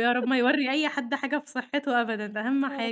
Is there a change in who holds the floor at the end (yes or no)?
yes